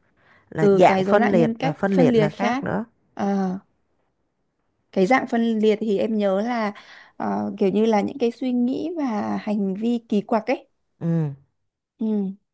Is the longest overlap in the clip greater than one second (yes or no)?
yes